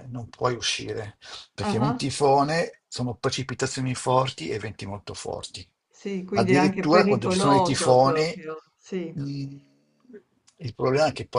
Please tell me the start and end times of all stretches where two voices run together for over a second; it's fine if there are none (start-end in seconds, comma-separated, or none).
6.3-8.4